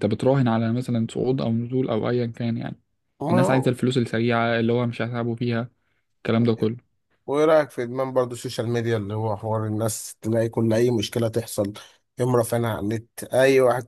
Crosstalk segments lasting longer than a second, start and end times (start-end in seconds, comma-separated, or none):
none